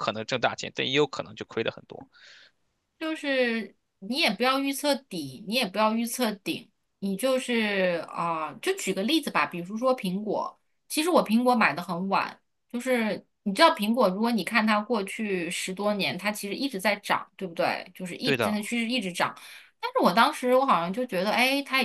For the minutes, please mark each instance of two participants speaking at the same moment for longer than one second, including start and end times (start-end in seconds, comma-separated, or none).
none